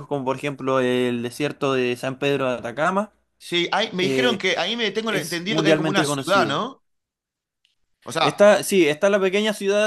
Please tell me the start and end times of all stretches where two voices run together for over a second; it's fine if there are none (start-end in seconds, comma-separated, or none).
5.1-6.6